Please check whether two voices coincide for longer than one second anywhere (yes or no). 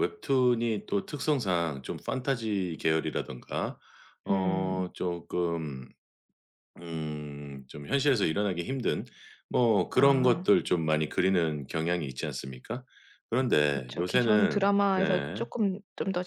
yes